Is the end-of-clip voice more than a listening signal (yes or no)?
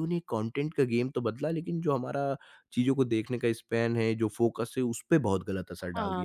yes